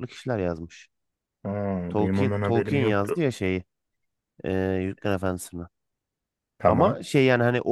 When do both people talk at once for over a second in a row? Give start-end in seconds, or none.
2.0-3.2